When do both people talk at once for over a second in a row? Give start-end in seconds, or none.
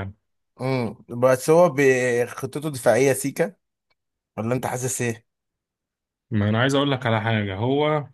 none